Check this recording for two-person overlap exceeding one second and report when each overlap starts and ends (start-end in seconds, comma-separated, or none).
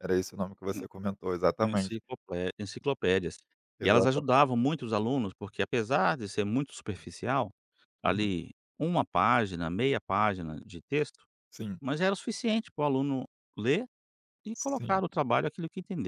none